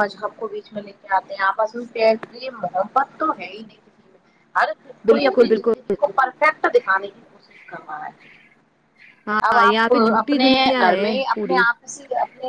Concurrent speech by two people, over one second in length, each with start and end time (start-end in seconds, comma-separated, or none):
9.5-11.6